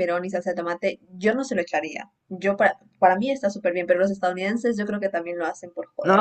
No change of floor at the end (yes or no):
no